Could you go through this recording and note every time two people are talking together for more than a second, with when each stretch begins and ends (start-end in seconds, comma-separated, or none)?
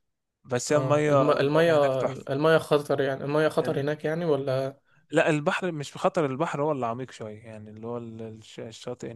0.7-2.3